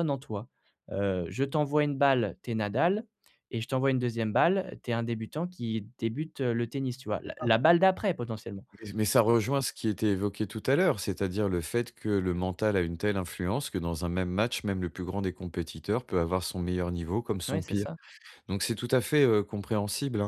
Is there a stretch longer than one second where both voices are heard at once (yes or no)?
no